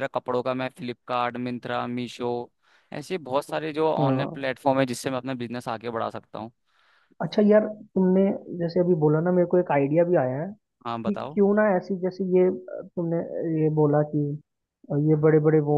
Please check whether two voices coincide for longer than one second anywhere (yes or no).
no